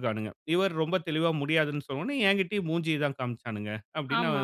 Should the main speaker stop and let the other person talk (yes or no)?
no